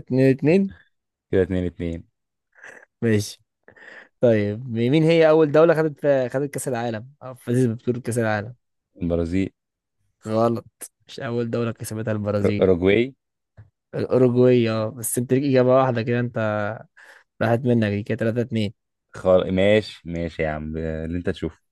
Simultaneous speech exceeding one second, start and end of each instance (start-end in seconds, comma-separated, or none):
none